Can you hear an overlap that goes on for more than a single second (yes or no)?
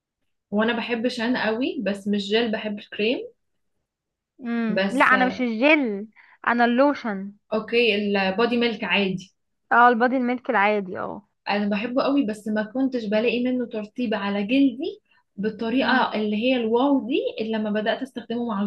no